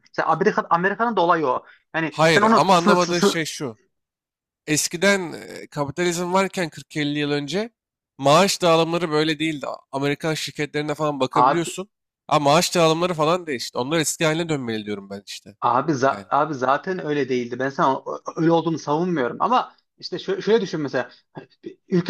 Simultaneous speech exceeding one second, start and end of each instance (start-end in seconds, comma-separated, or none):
2.1-3.4